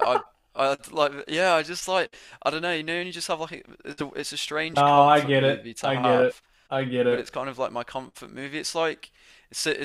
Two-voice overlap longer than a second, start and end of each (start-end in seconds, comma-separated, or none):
4.7-6.4